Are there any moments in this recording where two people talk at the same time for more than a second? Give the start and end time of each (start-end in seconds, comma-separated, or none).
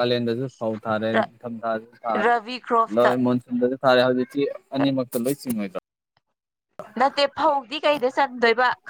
none